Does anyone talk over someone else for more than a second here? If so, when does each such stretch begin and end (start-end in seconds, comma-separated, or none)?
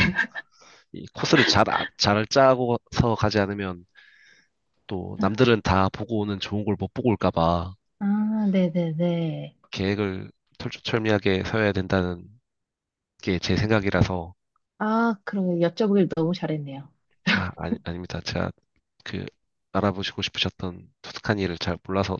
none